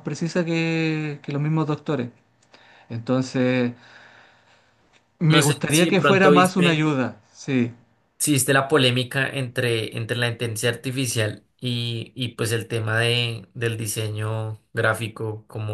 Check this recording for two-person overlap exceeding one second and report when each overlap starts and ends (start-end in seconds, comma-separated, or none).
5.2-6.9